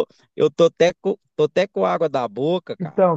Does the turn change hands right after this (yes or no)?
yes